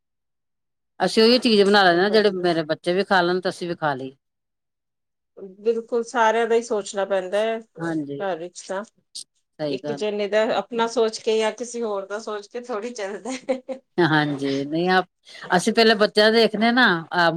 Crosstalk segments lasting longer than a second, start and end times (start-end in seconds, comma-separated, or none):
none